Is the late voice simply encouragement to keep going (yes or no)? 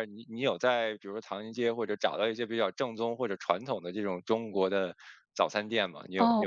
no